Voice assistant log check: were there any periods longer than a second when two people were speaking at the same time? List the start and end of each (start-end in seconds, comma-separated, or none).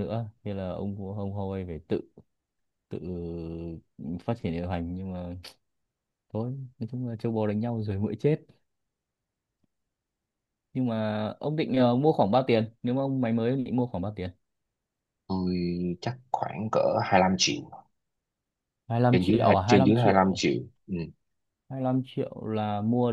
19.1-20.5